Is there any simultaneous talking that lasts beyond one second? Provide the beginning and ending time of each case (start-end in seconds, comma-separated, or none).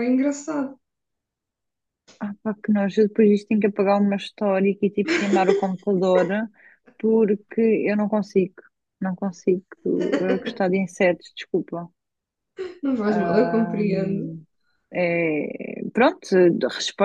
13.1-14.4